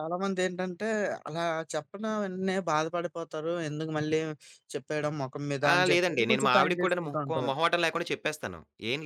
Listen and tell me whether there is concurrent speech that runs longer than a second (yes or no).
yes